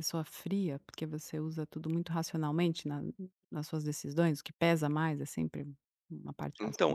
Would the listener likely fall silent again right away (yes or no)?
no